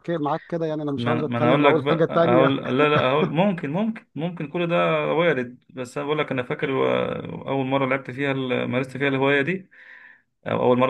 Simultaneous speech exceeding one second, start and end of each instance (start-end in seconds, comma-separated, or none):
1.0-2.6